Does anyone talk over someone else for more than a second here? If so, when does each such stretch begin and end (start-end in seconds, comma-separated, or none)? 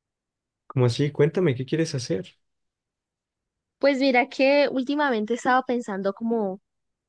none